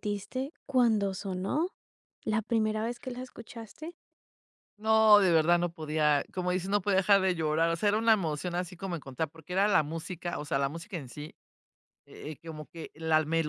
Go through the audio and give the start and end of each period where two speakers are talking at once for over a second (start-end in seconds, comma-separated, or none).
none